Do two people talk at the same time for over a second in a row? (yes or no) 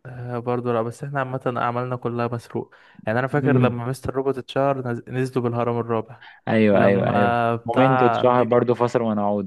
yes